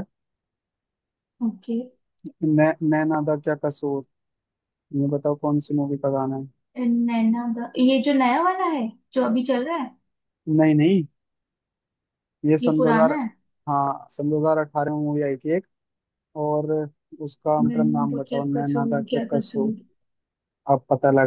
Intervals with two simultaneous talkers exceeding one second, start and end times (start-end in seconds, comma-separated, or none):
17.6-19.7